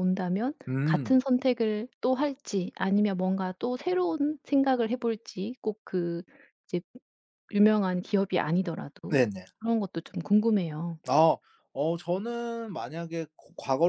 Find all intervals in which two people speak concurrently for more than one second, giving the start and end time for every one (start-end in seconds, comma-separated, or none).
none